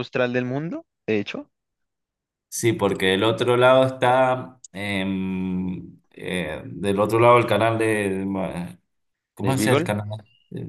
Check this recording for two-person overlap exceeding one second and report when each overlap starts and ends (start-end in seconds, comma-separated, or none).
none